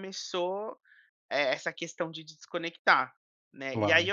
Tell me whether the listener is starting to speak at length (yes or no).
no